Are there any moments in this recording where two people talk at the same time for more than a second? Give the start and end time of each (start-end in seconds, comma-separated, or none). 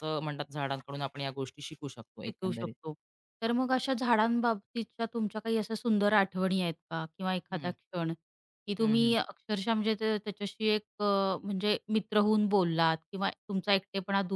none